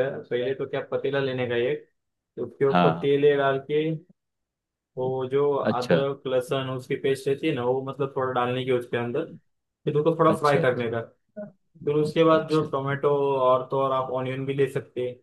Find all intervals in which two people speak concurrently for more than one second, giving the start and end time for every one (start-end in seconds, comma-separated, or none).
none